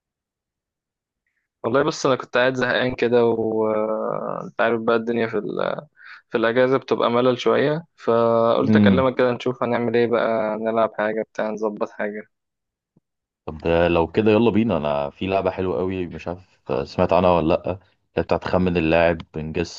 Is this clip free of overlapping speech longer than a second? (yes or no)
yes